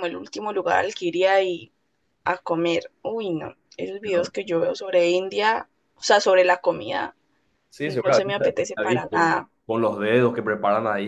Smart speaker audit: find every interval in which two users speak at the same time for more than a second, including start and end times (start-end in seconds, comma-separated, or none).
7.8-9.3